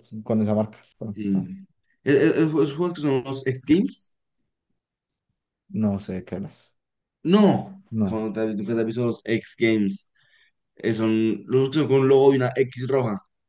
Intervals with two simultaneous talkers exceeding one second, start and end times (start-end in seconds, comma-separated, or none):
none